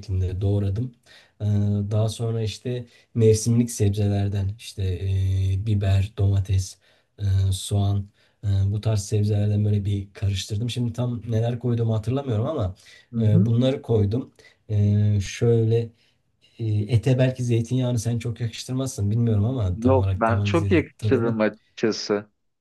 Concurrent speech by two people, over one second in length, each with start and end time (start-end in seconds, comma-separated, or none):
19.8-21.4